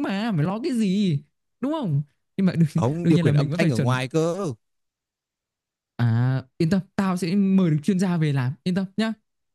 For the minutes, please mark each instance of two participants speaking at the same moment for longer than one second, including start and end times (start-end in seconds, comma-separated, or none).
2.8-4.0